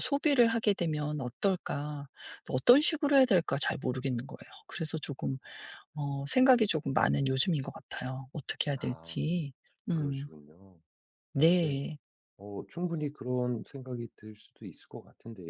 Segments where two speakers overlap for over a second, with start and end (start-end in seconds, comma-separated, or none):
none